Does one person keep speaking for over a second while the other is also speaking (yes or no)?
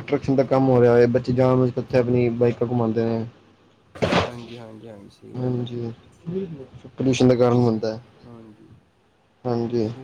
no